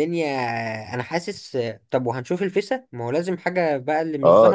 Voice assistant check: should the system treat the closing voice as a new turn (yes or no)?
yes